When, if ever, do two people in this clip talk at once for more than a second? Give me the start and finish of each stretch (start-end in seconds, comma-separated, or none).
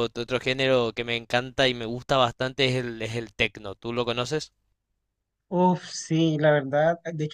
none